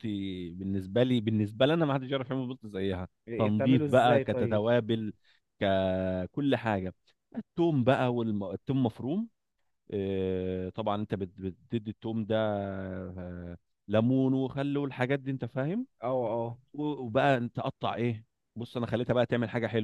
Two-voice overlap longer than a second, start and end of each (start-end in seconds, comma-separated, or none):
3.3-4.6